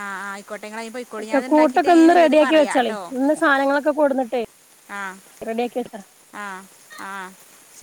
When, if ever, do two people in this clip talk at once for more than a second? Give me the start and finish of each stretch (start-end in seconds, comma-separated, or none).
1.2-3.0